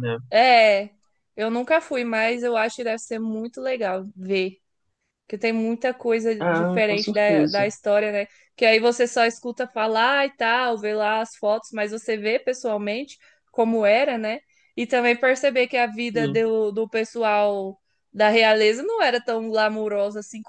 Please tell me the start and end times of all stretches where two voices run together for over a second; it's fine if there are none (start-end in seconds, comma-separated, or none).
6.4-7.7